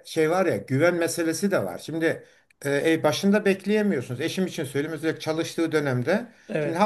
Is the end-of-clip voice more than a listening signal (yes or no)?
no